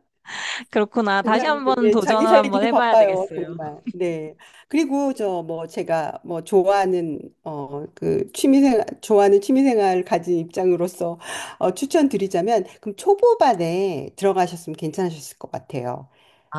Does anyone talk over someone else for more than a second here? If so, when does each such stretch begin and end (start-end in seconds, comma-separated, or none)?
1.2-3.6